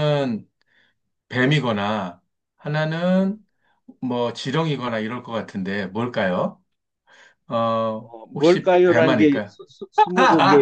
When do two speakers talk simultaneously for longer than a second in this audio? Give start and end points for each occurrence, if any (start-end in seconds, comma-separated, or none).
8.0-9.6